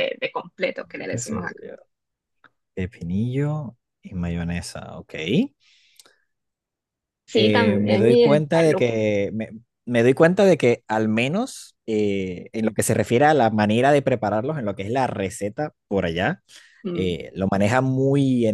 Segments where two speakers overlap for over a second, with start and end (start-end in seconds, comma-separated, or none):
7.3-9.0